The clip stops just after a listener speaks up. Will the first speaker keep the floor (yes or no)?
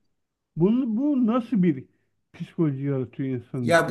no